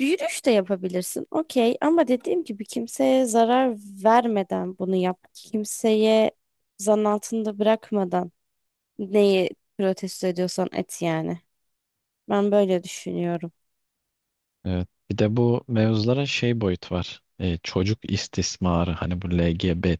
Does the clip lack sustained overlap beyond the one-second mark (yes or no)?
yes